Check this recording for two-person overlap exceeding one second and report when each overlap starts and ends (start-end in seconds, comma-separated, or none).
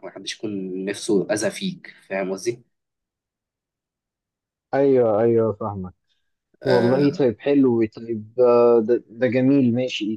none